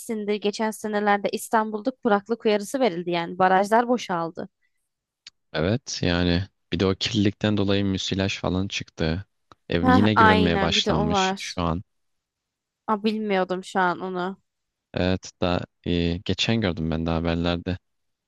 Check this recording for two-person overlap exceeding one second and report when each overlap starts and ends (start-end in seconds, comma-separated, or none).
9.8-11.6